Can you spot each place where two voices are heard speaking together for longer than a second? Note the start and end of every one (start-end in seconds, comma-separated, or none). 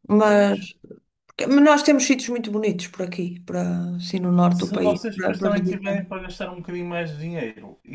4.5-6.1